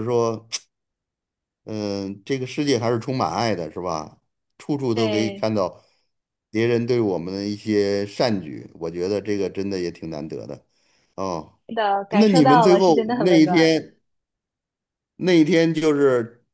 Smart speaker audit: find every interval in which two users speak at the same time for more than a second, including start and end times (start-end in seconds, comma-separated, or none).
12.1-13.9